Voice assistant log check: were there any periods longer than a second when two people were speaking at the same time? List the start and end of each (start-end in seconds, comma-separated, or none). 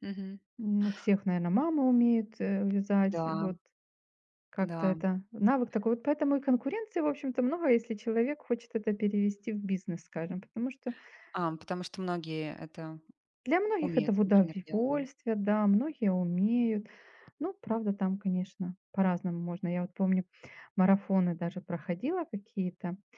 13.8-15.0